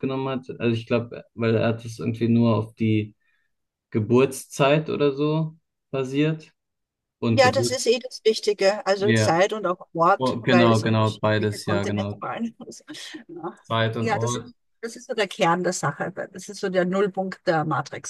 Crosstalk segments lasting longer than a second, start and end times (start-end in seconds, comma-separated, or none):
10.2-12.2